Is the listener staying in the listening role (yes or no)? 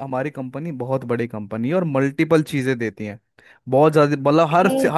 yes